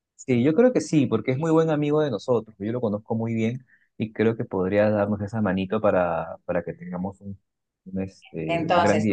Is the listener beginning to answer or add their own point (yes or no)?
yes